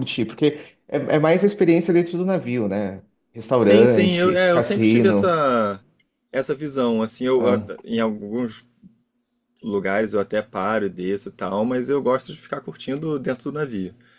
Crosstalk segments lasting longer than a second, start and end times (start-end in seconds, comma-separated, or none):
3.5-5.4